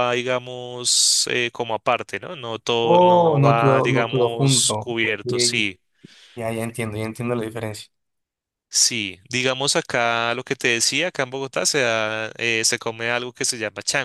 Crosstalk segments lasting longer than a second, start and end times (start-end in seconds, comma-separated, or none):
2.8-5.7